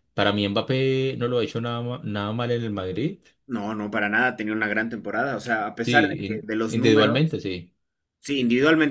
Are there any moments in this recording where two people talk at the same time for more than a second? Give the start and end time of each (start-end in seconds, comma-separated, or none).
5.8-7.2